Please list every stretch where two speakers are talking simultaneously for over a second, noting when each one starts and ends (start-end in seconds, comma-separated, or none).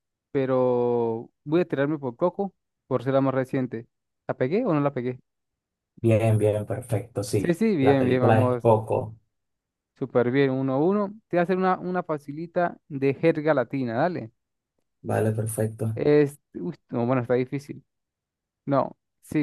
7.4-8.6